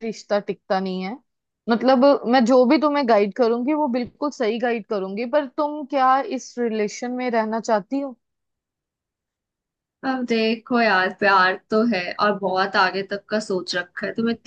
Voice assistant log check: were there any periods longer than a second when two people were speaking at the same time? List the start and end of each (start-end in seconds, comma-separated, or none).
none